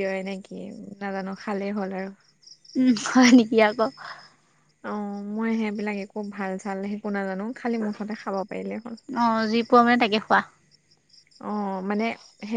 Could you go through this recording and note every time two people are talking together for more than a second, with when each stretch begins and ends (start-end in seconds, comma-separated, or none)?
none